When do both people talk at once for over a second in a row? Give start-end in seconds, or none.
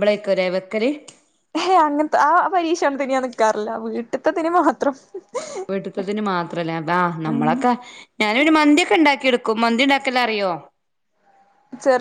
none